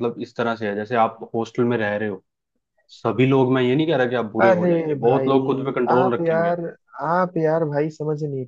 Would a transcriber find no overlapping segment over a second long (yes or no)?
no